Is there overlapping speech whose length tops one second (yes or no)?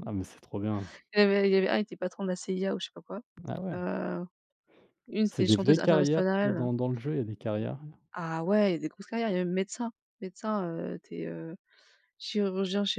yes